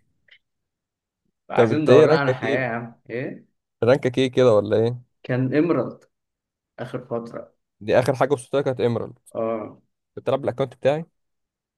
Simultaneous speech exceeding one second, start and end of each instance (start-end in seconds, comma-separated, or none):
1.6-2.8